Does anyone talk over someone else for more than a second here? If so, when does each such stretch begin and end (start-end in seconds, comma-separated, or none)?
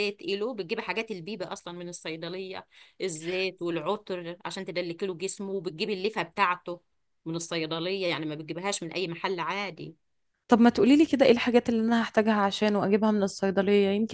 none